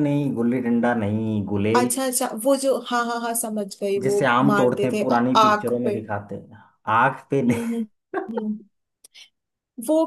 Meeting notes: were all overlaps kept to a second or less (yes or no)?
no